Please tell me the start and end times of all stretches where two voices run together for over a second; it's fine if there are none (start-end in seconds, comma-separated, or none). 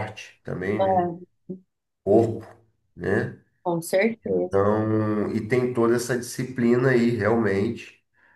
none